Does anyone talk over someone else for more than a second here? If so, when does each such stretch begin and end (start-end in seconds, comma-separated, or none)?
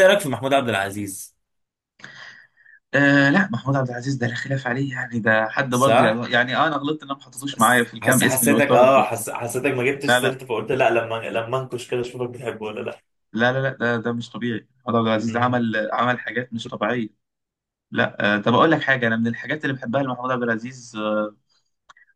7.5-9.1